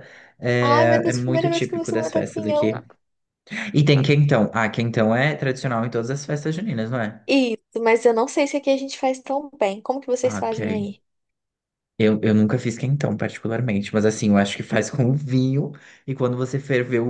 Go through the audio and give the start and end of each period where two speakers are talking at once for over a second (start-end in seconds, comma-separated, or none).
0.6-2.7